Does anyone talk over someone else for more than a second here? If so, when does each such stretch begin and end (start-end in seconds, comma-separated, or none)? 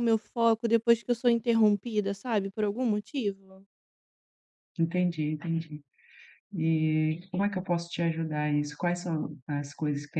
none